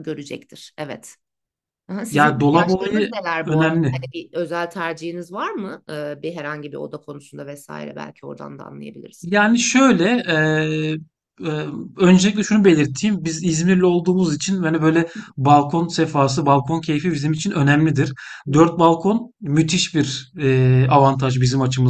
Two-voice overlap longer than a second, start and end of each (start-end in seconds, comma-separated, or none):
2.1-3.9